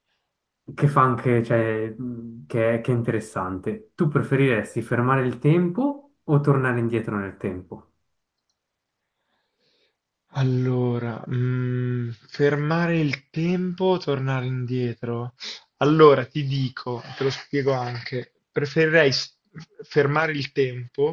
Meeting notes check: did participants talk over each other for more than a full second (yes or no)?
no